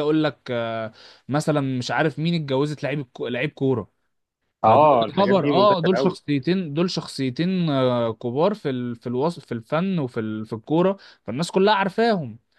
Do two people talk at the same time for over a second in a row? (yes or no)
yes